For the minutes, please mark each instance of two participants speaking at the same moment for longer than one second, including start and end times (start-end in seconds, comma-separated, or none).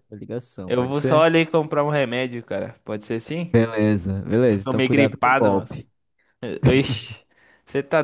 4.5-5.9